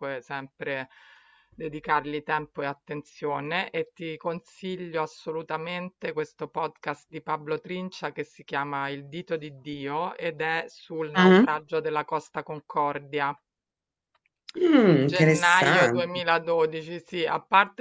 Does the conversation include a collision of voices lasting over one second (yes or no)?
yes